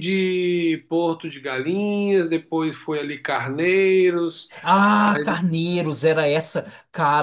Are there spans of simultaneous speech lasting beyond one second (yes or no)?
no